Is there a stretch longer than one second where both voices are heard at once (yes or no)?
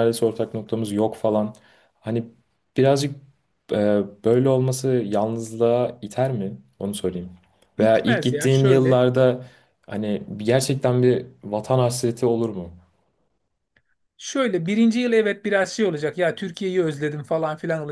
yes